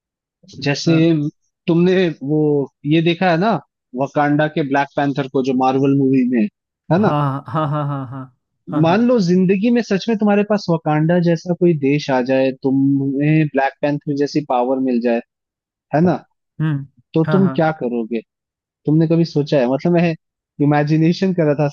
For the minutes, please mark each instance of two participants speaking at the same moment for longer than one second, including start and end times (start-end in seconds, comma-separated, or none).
none